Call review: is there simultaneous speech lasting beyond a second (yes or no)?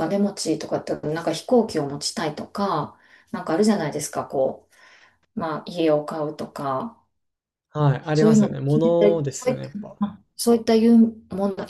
yes